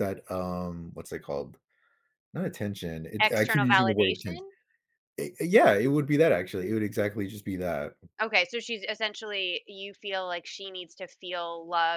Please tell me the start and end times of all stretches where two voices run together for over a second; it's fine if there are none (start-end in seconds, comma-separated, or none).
3.2-4.5